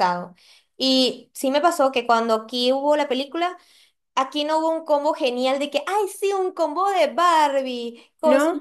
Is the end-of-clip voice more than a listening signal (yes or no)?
no